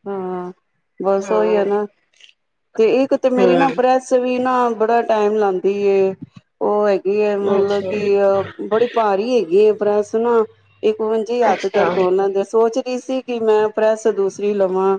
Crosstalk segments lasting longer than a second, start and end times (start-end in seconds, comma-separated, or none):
none